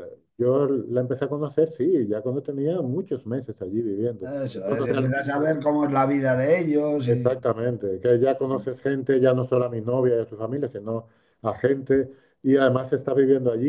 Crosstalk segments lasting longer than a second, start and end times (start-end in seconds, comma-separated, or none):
4.2-5.5